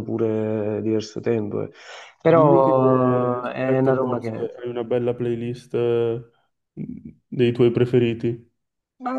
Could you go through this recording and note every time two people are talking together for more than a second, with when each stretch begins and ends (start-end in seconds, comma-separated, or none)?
2.3-4.5